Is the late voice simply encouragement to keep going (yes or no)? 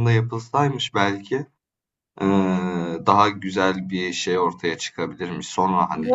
no